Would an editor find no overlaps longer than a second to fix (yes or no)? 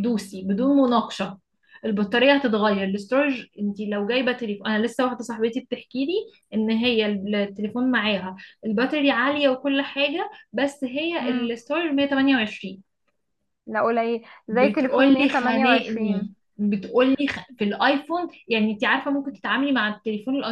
no